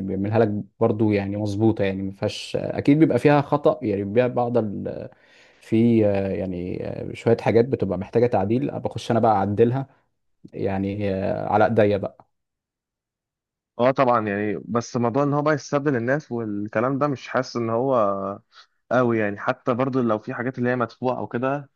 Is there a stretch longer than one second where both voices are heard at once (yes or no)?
no